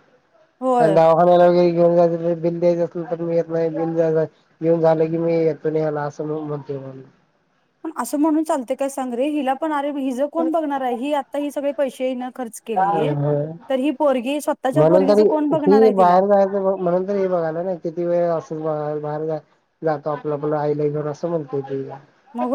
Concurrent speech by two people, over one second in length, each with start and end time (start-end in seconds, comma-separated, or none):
none